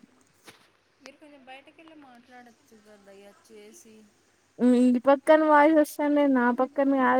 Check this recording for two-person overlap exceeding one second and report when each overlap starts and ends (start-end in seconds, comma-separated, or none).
none